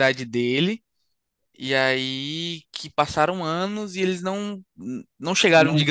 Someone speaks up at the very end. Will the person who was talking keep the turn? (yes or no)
yes